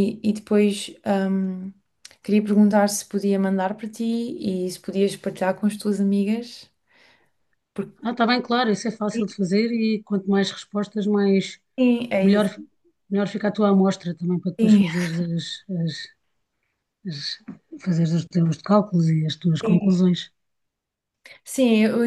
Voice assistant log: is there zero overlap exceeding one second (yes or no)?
yes